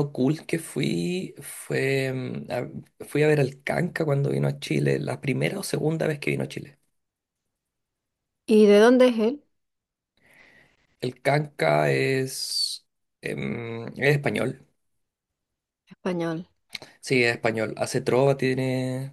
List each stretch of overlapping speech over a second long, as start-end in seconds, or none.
none